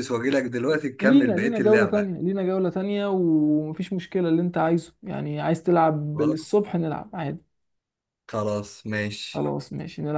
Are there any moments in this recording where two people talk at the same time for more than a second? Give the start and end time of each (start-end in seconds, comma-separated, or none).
1.0-2.2